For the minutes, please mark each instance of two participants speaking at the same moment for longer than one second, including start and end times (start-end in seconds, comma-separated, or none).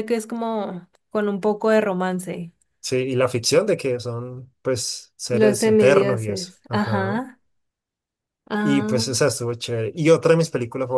5.3-7.2